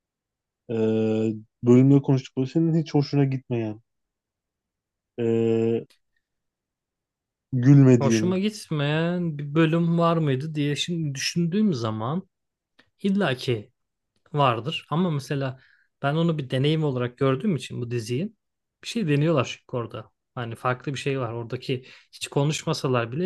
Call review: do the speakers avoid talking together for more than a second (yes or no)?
yes